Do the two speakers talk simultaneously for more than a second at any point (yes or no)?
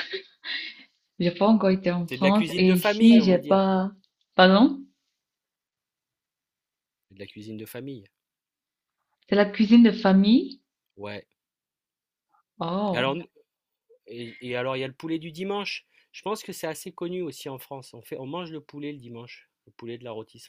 yes